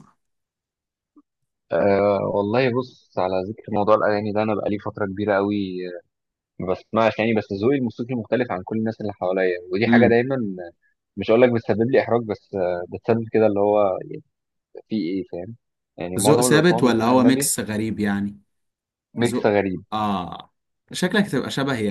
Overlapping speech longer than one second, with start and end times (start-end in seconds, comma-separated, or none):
16.2-17.5